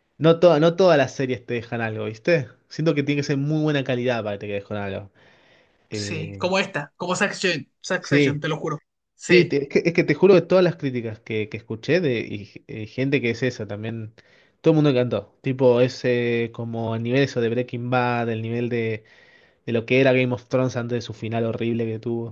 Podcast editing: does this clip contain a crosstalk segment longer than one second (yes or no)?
no